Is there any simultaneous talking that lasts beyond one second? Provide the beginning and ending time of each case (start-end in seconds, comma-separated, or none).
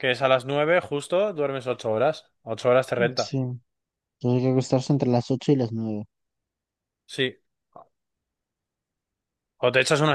none